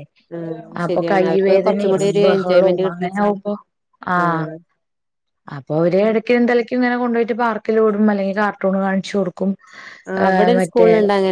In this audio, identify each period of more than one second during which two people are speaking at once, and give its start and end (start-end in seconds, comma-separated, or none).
0.8-3.1